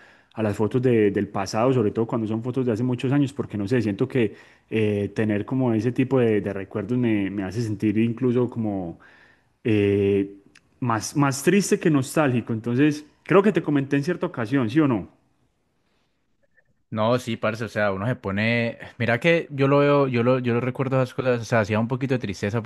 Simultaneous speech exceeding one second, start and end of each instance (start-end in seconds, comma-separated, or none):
none